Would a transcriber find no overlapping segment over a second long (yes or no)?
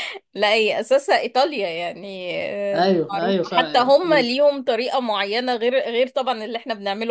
no